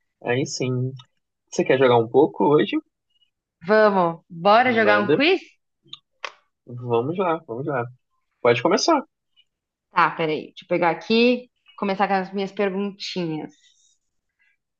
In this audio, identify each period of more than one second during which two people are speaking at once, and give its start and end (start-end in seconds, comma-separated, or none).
none